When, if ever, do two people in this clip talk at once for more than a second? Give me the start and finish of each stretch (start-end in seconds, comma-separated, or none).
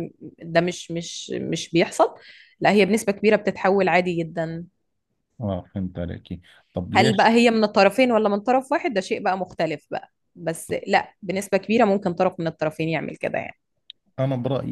none